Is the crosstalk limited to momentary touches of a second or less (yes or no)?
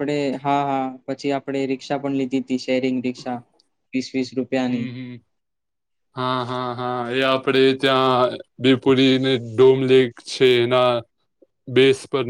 yes